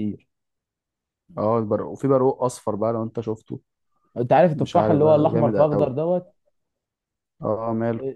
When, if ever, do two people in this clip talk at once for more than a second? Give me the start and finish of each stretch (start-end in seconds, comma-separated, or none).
4.5-6.0